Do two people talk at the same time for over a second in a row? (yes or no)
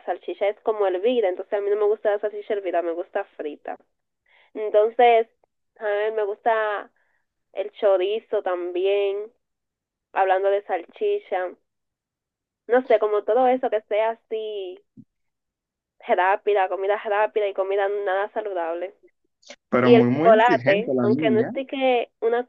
yes